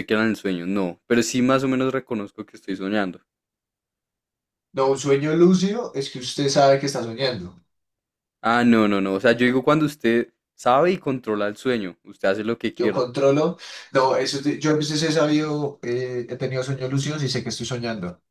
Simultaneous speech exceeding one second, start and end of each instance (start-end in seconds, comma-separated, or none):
none